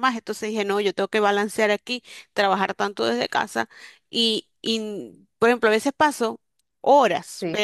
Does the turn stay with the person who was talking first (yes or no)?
yes